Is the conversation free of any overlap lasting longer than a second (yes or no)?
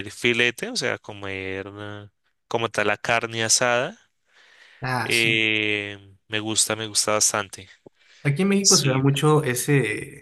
yes